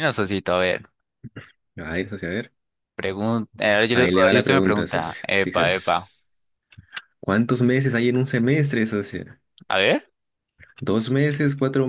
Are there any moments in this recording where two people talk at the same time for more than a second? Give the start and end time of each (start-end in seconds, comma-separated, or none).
3.9-6.1